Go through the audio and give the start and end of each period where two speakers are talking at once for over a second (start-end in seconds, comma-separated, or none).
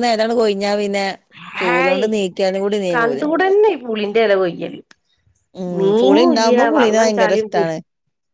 5.8-7.7